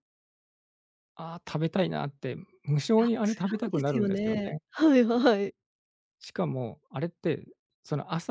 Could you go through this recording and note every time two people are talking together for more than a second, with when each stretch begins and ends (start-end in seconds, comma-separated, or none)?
3.0-4.6